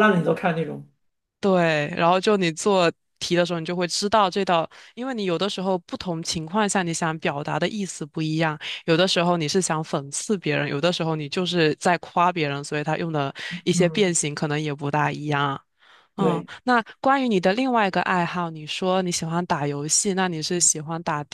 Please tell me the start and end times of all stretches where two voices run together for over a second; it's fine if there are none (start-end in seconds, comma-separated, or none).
none